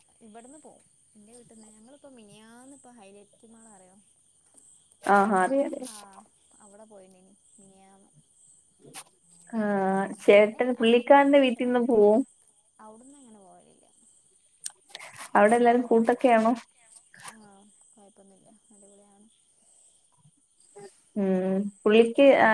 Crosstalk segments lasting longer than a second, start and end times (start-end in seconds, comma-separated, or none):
10.3-11.9